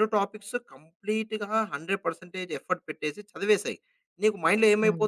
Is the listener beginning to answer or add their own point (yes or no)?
no